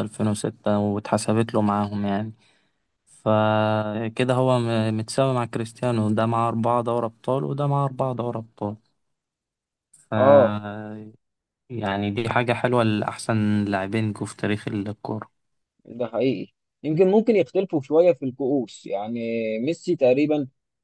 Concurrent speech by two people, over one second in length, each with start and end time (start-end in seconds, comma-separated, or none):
none